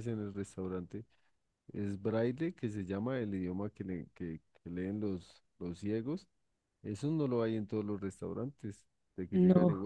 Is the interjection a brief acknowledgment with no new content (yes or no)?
yes